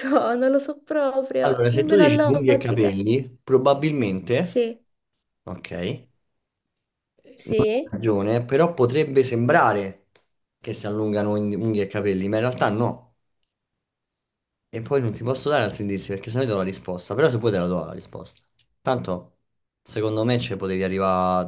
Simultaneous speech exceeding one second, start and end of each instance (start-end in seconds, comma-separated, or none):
1.4-3.0